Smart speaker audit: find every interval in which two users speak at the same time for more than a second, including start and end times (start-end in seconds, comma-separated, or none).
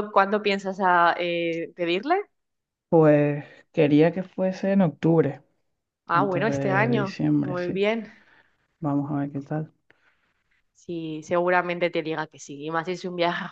6.1-7.8